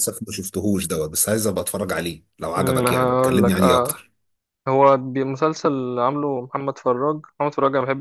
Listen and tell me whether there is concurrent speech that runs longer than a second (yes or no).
yes